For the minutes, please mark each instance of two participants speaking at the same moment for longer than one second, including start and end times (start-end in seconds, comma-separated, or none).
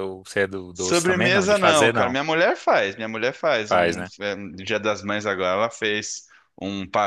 0.7-2.2